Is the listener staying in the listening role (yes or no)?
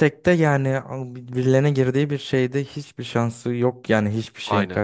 no